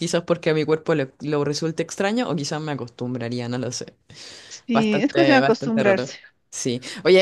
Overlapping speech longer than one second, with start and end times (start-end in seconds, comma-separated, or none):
4.7-6.1